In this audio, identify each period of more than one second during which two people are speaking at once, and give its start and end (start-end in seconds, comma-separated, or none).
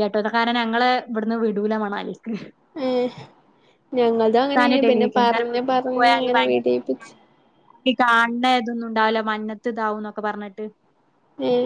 4.2-7.1